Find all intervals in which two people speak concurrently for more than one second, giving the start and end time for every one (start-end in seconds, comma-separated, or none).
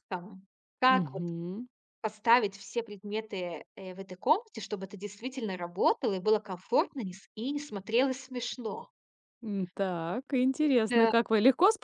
none